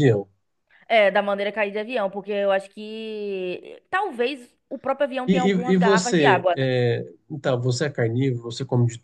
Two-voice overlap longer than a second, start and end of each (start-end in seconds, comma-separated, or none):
5.3-6.7